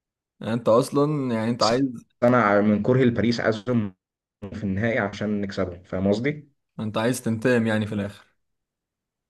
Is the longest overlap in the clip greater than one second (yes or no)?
no